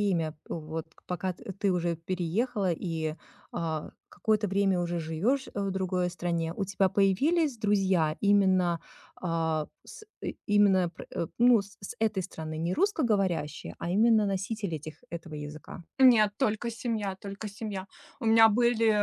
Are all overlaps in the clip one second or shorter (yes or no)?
yes